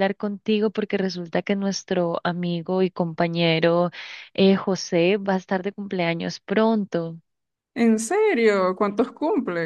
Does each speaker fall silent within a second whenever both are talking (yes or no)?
yes